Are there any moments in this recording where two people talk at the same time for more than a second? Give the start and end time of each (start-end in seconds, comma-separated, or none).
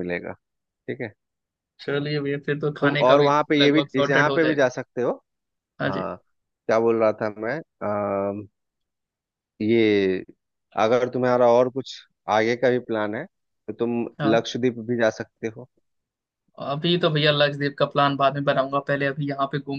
2.8-4.7